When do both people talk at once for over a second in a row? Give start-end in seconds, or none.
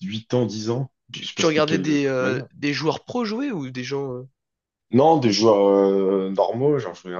1.1-2.5